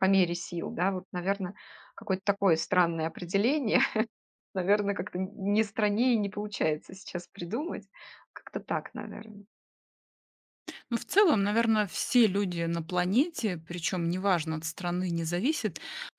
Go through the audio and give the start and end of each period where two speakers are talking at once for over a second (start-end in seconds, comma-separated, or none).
none